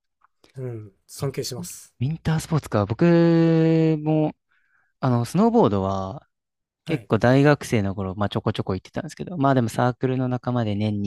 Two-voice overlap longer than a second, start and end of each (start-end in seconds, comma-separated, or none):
none